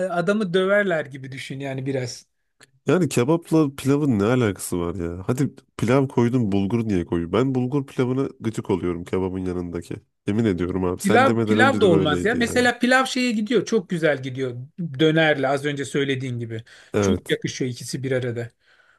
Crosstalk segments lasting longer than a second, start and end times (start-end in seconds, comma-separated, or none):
11.0-12.7